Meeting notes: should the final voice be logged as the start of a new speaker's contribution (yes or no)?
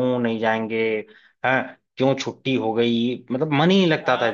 yes